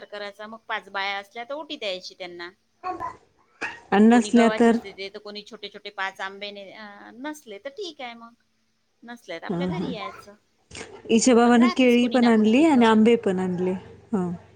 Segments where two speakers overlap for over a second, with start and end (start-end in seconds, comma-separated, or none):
11.4-12.9